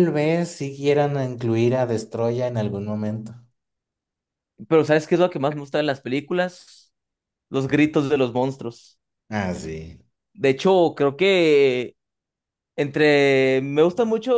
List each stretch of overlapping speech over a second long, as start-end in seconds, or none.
none